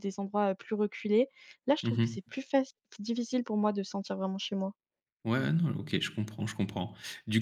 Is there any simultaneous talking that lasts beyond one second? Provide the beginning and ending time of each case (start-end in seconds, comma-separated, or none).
none